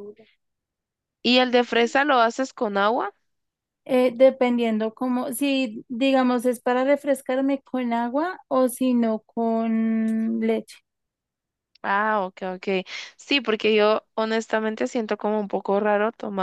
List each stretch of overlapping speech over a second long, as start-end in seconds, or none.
none